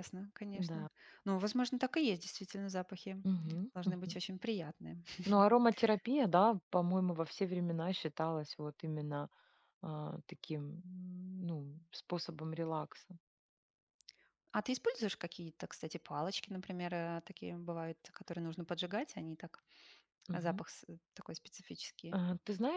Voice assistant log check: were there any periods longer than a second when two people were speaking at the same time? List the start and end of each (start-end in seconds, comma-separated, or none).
none